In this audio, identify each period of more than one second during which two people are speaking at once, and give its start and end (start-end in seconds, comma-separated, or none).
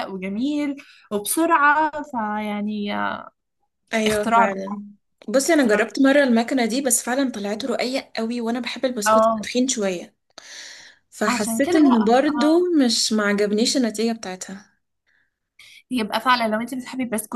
11.3-12.6